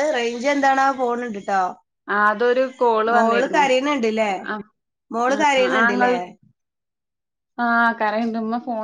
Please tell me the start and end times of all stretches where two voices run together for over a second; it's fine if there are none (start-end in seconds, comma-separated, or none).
none